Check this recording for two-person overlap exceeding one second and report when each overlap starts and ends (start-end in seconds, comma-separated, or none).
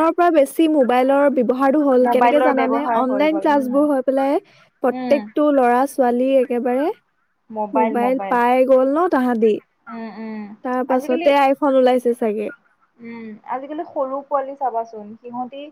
2.1-3.9